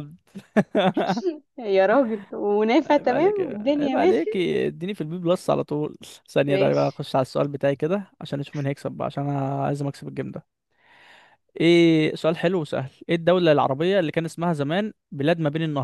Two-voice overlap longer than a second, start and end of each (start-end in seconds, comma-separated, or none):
2.8-4.4